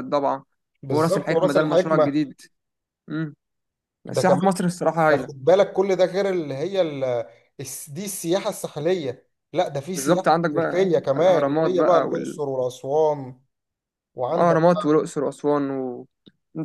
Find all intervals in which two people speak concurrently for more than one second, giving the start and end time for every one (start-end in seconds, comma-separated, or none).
0.9-2.3, 9.9-12.4